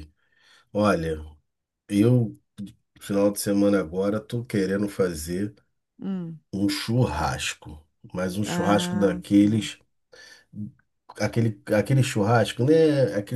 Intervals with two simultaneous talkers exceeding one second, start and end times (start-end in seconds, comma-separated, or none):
8.4-9.7